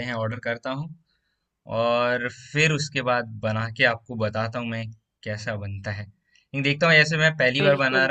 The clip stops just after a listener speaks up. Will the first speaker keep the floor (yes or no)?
yes